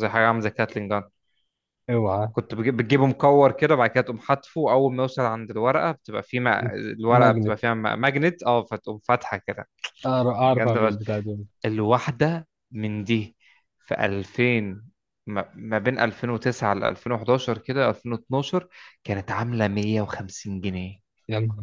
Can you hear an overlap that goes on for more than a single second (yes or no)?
no